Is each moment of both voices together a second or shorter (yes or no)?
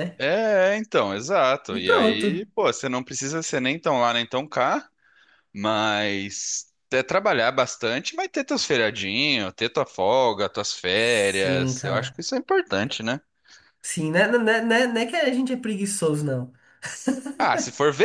no